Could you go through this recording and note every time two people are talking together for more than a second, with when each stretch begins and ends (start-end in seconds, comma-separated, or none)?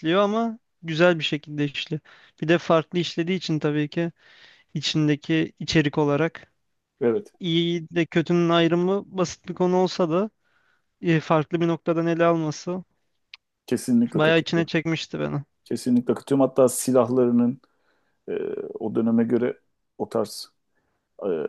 none